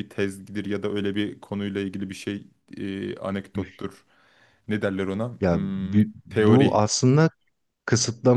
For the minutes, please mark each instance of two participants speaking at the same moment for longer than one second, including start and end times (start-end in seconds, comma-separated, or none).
5.4-6.8